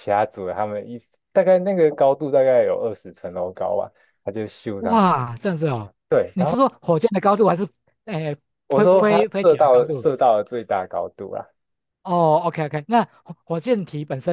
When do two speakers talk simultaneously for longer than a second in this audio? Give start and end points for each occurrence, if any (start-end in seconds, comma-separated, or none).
8.7-10.1